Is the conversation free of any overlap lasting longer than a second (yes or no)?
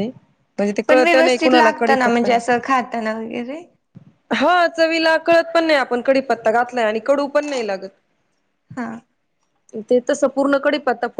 no